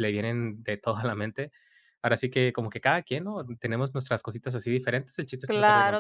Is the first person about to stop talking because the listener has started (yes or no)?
yes